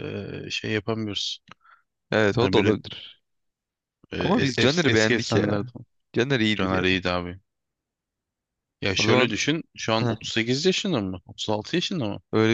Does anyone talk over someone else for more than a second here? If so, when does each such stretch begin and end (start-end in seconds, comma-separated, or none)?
4.2-5.6